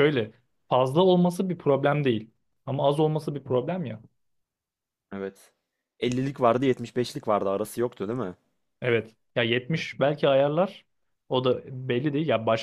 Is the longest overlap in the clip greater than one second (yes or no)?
no